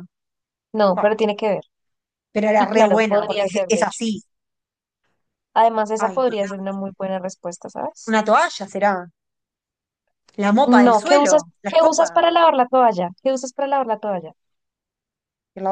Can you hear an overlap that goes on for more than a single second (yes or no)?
yes